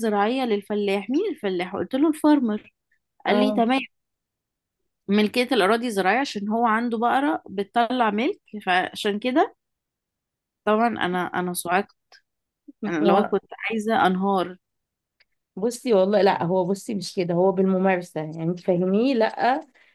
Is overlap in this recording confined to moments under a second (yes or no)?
yes